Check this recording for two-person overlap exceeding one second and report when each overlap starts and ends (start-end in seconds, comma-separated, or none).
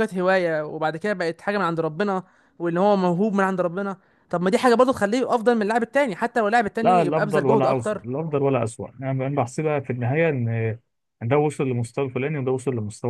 6.8-8.0